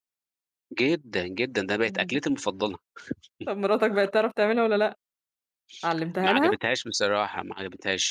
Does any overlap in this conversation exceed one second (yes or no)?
no